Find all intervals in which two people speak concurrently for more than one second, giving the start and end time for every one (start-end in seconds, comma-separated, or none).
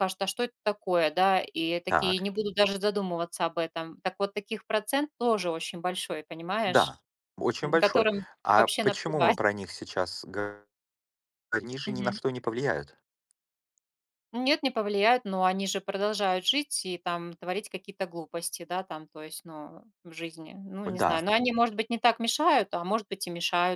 7.6-9.4